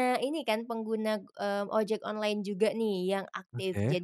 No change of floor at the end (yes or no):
yes